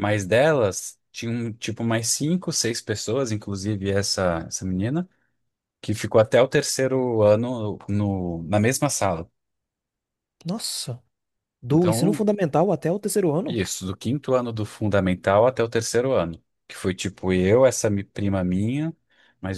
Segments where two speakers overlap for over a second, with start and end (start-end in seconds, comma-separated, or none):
none